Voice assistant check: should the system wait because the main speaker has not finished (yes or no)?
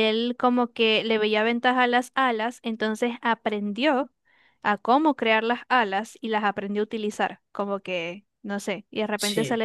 yes